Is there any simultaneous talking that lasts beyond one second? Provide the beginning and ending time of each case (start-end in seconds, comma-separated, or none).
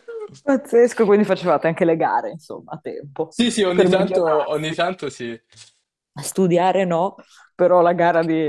3.3-4.8